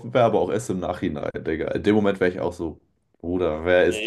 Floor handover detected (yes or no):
yes